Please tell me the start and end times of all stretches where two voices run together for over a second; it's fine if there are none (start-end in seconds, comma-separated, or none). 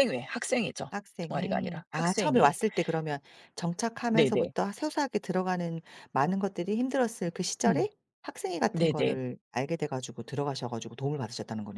0.9-2.6